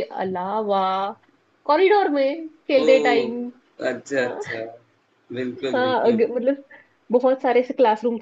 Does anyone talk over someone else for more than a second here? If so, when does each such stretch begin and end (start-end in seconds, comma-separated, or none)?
none